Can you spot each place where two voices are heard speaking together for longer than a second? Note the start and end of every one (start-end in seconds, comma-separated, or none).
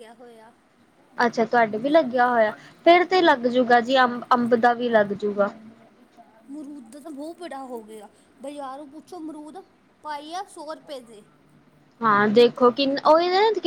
none